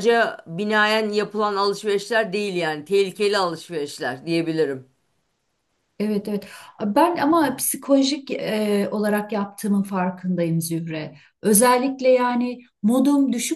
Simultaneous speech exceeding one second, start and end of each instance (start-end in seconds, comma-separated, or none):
none